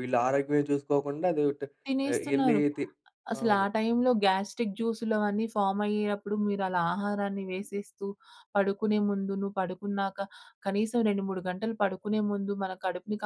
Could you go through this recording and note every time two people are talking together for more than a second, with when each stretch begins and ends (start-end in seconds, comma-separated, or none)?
none